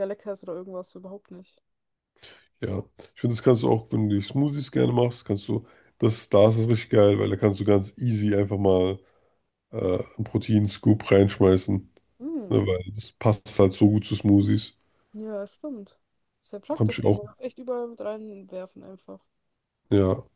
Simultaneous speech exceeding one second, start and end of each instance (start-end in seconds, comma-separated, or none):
none